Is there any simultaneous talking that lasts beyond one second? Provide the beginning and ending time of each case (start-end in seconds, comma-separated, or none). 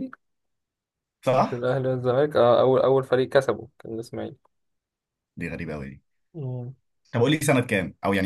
none